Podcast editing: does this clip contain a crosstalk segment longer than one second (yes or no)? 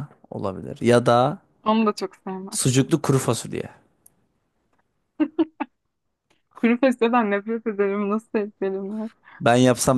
no